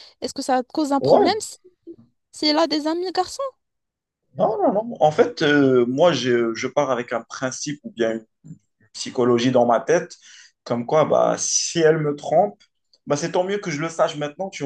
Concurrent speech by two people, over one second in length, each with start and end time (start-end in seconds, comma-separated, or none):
none